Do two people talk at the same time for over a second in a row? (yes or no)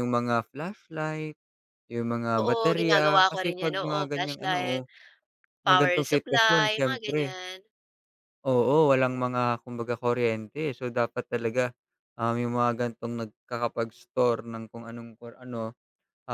yes